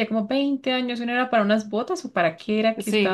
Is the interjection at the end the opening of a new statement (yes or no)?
yes